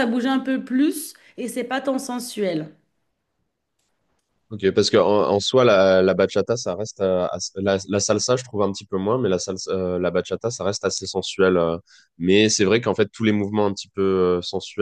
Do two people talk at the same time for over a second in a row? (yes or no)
no